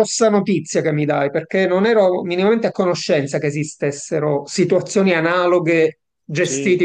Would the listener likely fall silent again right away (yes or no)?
yes